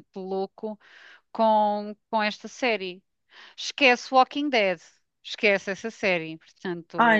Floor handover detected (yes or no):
yes